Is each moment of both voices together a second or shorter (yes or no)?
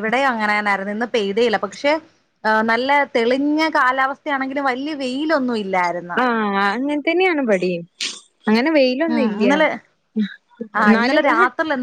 yes